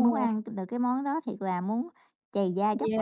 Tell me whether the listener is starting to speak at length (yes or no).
yes